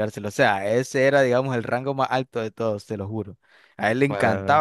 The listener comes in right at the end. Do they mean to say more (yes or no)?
no